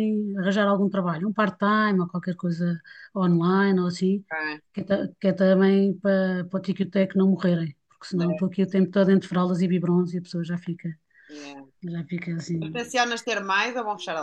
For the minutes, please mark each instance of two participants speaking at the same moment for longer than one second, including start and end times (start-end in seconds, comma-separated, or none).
none